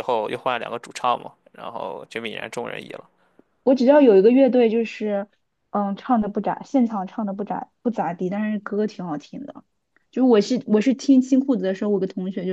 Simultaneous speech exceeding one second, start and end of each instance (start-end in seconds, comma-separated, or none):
none